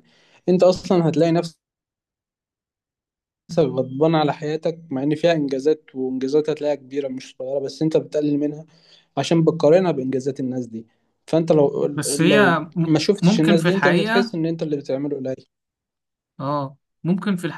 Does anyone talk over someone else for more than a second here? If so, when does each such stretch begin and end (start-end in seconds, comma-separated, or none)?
11.9-14.3